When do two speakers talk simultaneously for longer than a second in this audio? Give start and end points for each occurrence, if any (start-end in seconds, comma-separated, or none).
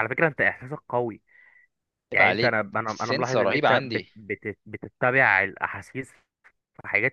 2.1-4.1